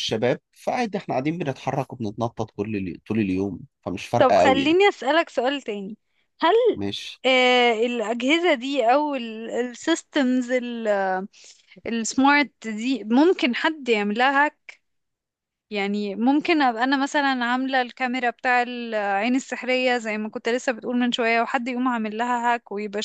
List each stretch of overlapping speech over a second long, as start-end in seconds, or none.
none